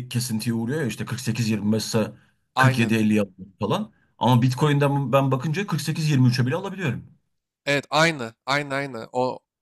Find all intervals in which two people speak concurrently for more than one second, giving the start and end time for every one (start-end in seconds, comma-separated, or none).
none